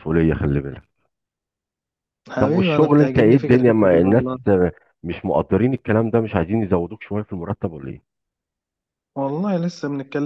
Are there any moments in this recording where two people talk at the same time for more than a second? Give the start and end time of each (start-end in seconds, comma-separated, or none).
2.4-4.2